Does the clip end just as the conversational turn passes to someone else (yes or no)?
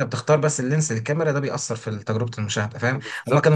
no